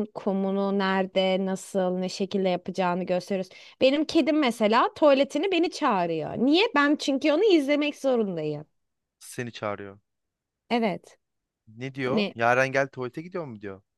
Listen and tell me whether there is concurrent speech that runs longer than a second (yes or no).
no